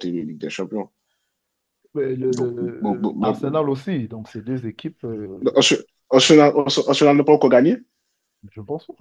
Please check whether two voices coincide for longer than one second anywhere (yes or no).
no